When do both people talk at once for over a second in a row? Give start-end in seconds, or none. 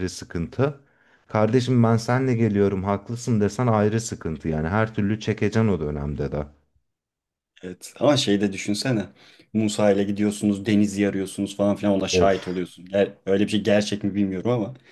none